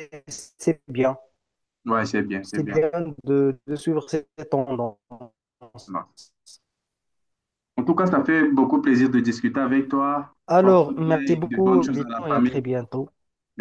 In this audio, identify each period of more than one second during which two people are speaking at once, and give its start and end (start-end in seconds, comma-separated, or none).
10.5-12.6